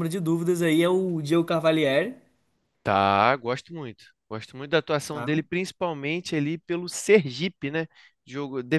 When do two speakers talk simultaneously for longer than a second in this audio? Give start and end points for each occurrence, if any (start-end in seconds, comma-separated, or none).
none